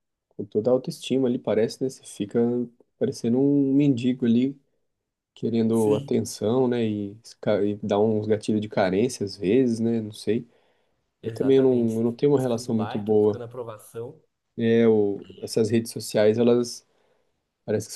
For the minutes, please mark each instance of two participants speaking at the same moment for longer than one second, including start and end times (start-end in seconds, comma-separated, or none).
11.2-13.4